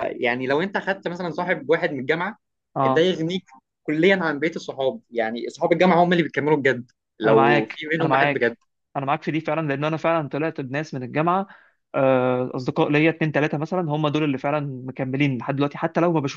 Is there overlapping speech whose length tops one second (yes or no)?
yes